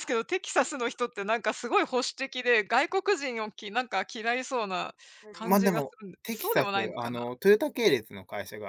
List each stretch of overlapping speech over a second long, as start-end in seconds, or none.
5.4-7.3